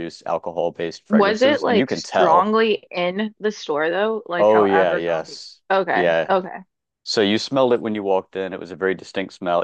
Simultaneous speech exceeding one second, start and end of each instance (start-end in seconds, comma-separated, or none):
1.1-2.5, 4.4-6.3